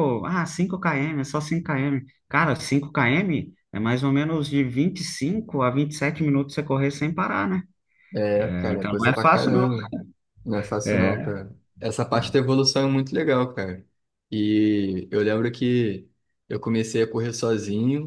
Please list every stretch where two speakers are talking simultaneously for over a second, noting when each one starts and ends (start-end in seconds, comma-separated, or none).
8.4-9.7